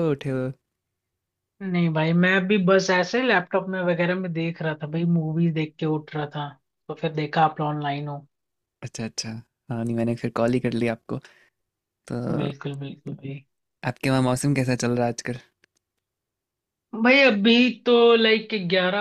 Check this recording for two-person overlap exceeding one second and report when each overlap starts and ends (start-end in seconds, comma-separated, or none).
none